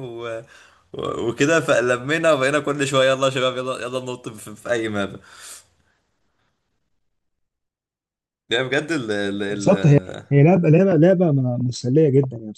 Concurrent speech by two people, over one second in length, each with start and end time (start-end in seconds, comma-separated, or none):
none